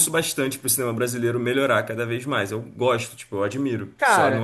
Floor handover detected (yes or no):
yes